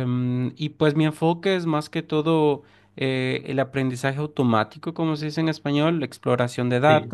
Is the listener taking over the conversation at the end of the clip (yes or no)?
no